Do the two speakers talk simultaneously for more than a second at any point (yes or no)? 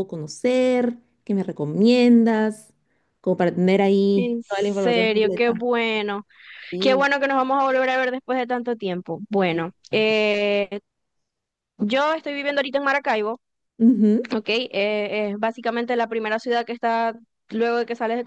yes